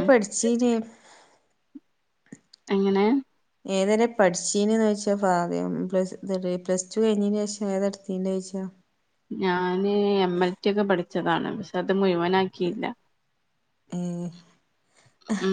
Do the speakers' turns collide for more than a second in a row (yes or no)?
no